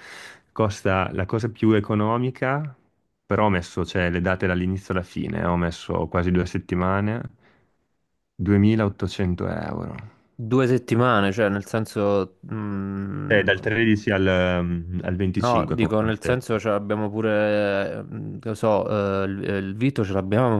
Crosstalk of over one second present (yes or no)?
yes